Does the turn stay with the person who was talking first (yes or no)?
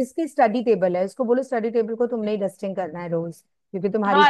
no